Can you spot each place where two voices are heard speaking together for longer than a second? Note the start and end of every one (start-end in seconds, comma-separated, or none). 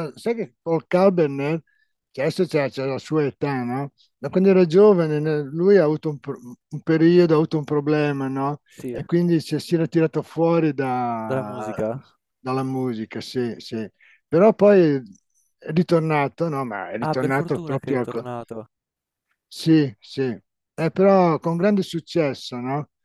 17.0-18.2